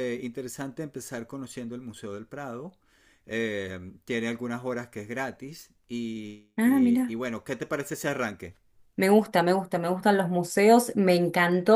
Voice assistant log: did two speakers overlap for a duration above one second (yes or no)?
no